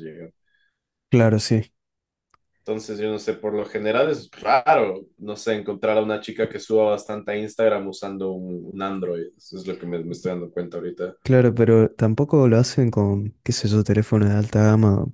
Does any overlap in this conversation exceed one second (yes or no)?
no